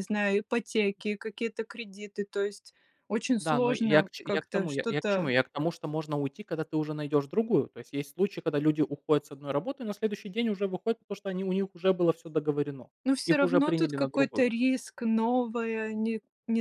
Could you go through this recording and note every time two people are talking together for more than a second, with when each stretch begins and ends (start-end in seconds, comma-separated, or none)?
3.4-5.3, 13.3-14.6